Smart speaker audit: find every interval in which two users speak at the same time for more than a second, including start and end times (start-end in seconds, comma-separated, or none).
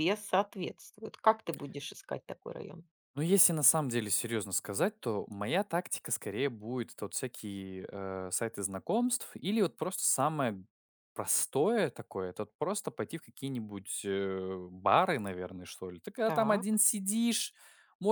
none